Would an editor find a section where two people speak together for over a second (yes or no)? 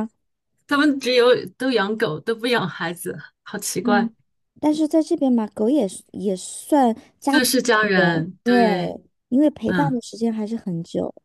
yes